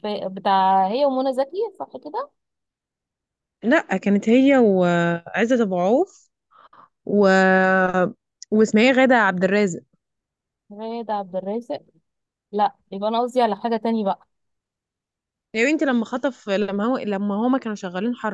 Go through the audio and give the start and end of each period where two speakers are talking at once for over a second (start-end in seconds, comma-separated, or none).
none